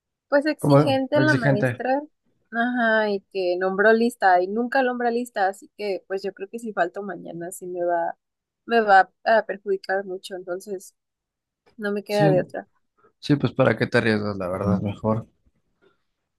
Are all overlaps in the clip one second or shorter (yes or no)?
no